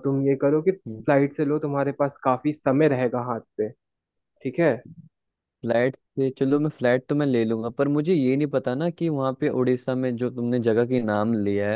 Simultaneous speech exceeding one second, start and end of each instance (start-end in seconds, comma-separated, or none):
none